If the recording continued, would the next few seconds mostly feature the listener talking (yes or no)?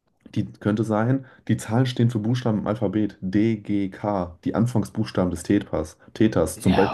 no